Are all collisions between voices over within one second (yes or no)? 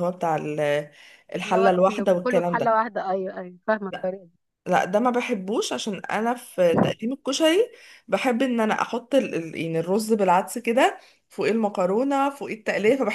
no